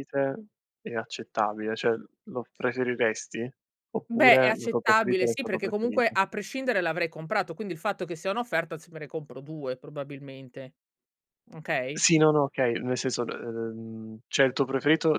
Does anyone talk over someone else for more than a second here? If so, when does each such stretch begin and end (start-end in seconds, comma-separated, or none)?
4.1-6.1